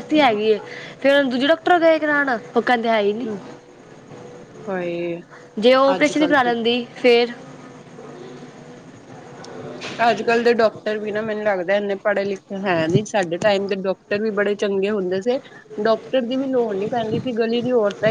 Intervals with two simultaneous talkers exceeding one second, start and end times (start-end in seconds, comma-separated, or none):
none